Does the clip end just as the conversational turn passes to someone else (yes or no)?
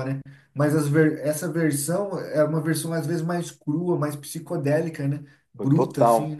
yes